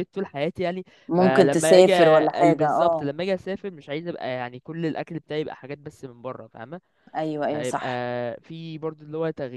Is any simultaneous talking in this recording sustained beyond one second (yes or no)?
yes